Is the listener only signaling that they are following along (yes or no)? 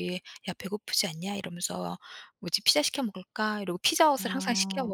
yes